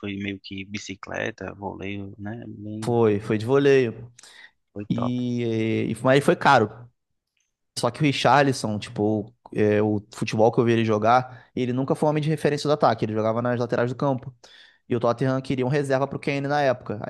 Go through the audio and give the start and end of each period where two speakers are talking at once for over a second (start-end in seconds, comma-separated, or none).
none